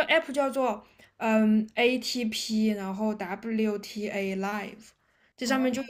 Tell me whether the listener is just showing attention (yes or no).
yes